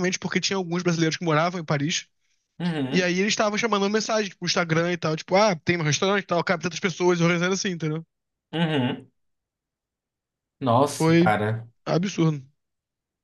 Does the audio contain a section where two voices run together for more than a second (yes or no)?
no